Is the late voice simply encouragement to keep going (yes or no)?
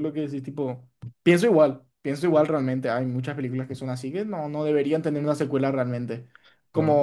yes